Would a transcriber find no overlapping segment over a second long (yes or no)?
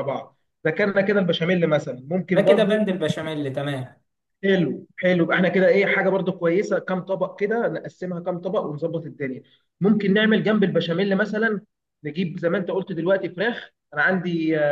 yes